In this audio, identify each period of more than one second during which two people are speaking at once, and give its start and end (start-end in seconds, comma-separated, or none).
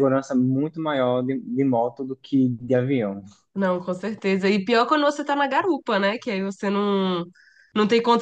none